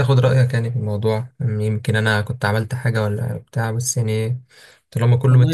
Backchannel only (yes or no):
no